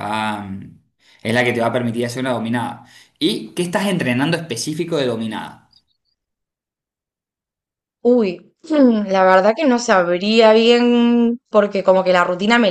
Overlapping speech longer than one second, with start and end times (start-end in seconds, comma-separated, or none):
none